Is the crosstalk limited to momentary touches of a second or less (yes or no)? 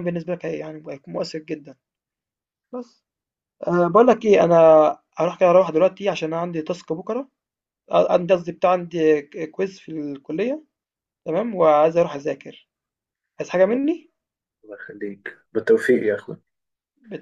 yes